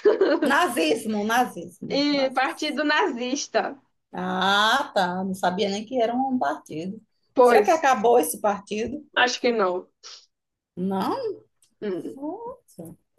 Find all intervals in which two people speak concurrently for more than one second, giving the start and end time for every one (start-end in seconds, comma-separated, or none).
none